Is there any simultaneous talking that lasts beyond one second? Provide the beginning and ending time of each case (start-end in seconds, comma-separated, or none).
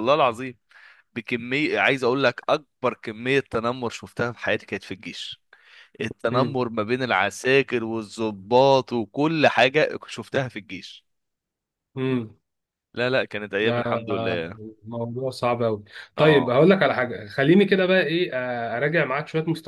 none